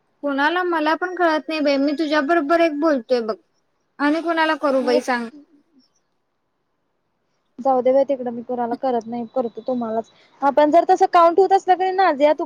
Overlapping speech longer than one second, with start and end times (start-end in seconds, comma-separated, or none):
none